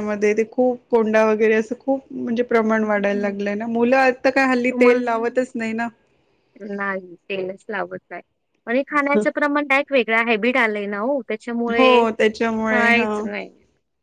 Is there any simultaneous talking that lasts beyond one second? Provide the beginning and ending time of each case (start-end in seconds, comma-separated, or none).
none